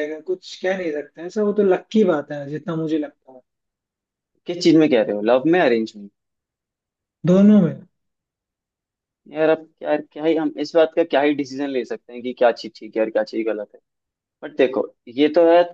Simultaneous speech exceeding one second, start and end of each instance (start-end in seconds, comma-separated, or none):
none